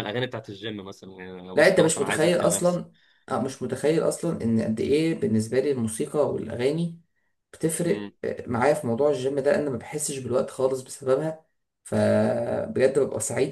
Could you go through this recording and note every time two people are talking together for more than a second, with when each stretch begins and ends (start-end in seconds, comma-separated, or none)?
1.6-2.8